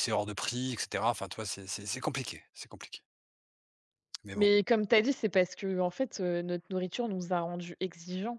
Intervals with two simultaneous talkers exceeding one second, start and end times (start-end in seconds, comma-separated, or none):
none